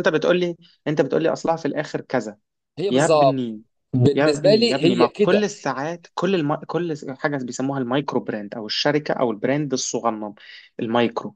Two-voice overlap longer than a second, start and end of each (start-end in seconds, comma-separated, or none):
4.1-5.5